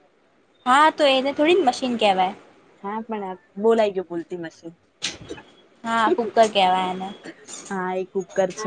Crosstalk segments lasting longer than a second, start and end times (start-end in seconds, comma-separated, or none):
none